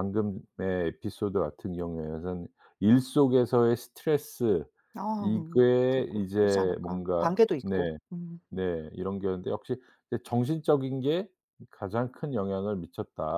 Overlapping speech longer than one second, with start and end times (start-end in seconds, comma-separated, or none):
5.2-8.0